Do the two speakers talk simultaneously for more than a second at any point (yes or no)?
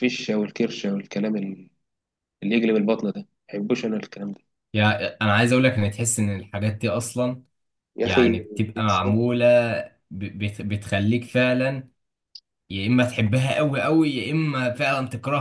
no